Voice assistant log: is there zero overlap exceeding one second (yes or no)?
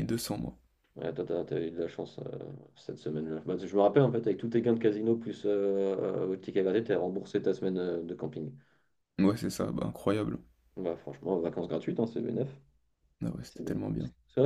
yes